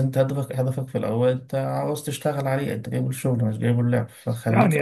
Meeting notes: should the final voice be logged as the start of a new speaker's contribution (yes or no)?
yes